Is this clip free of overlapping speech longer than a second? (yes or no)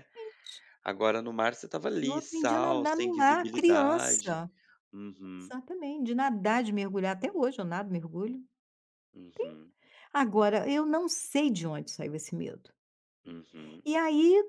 no